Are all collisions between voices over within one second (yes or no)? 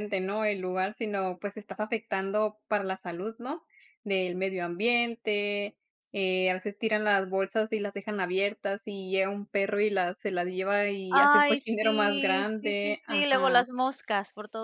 no